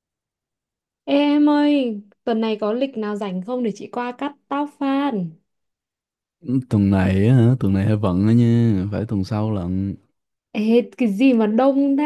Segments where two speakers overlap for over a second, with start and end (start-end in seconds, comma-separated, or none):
none